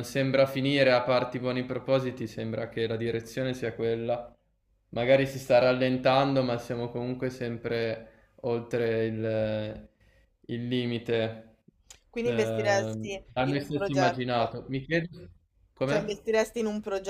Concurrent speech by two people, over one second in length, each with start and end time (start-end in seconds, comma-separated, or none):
12.2-14.5